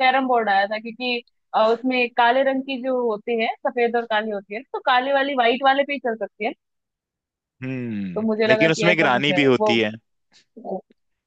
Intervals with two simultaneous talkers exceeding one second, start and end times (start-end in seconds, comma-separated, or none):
8.2-9.8